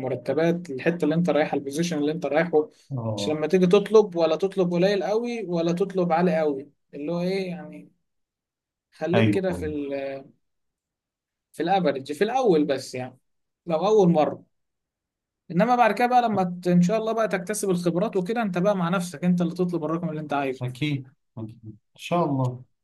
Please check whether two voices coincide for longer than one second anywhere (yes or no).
no